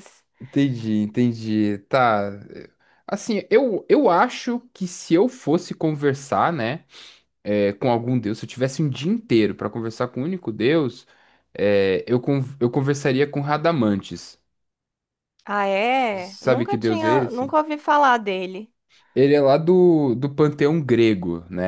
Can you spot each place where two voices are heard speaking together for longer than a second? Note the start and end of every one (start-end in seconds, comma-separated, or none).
16.2-17.6